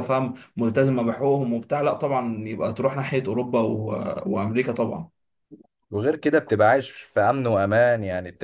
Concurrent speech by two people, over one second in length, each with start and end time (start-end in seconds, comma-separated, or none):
none